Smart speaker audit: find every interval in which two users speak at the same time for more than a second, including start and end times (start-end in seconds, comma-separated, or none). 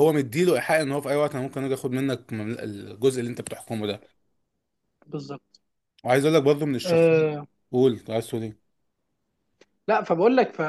none